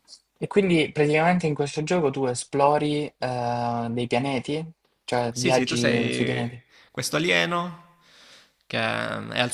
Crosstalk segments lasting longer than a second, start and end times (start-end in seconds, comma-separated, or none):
5.3-6.5